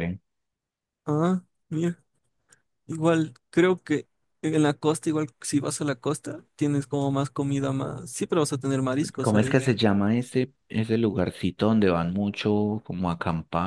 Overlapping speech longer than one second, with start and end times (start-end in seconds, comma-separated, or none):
none